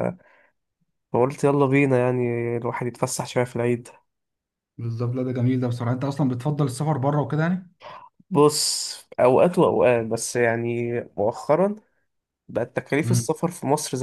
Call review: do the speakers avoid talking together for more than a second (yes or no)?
yes